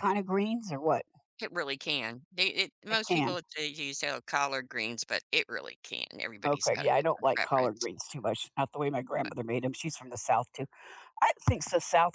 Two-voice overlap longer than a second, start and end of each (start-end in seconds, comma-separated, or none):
6.4-7.9